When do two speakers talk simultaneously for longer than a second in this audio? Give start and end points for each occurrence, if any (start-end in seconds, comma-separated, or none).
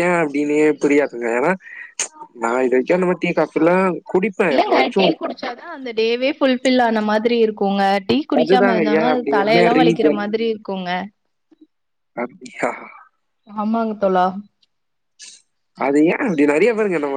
8.4-10.2